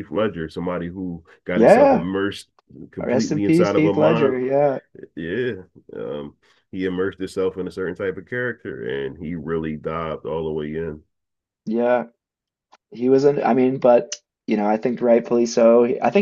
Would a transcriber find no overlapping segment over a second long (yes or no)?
no